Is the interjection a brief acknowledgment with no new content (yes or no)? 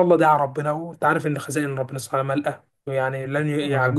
yes